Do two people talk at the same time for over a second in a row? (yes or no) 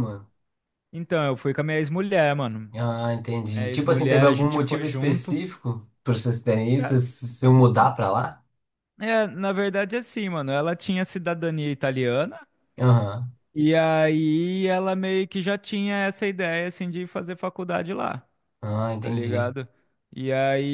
yes